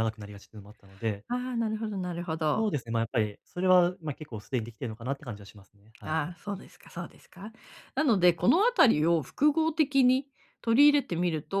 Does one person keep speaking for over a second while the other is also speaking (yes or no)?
no